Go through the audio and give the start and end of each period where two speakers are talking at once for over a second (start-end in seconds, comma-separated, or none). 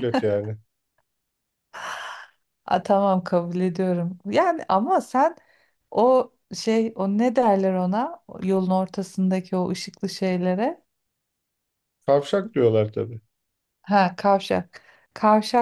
none